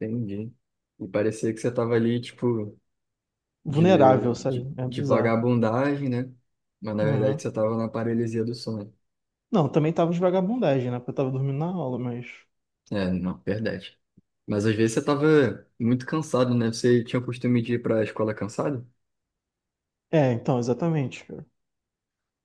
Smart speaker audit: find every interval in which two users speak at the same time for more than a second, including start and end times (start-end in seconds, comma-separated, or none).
3.7-5.5